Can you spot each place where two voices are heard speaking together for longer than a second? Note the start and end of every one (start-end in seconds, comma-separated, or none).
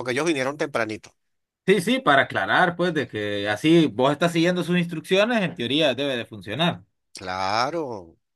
none